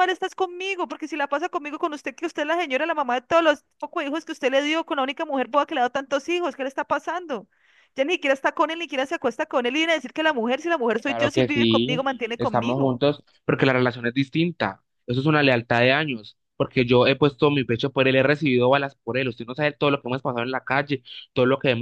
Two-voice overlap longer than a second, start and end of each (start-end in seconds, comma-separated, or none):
11.1-13.0